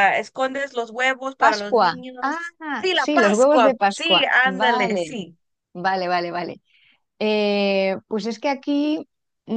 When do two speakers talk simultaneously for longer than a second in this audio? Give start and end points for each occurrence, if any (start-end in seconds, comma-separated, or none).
1.4-5.2